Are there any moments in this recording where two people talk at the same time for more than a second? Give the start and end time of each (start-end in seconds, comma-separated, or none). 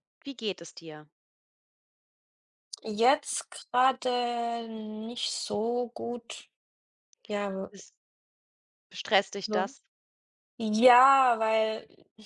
none